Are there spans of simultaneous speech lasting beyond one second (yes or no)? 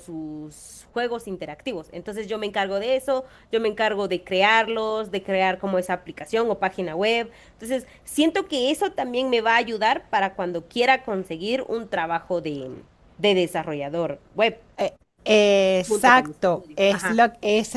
yes